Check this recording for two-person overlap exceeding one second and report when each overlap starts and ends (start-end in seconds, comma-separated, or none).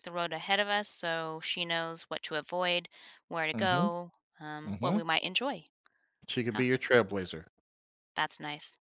none